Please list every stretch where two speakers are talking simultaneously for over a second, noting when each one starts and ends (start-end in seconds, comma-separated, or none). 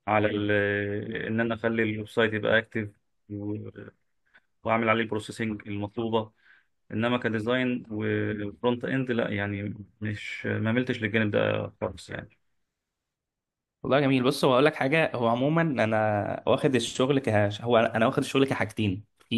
none